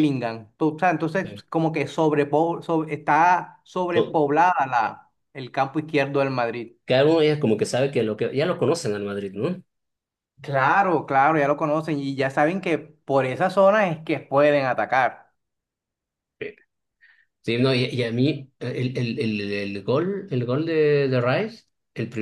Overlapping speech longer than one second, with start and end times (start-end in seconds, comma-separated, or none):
none